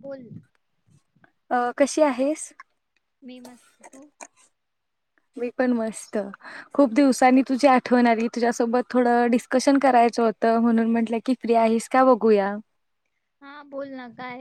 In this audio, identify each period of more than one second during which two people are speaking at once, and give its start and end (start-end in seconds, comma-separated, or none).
none